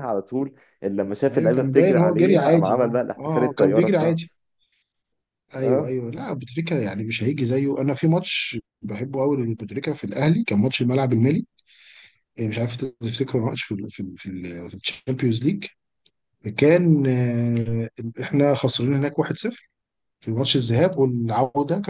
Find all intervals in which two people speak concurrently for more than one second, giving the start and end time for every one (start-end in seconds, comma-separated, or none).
1.3-4.3